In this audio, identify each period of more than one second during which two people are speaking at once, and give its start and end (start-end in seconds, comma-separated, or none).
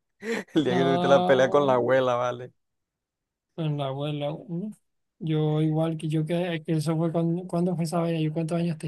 0.6-1.9